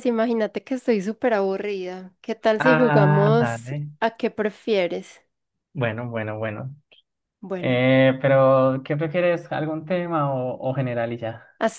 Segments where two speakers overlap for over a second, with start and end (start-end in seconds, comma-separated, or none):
2.6-3.9